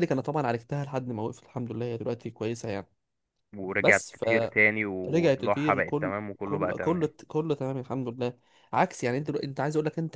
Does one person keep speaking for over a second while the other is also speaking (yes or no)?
yes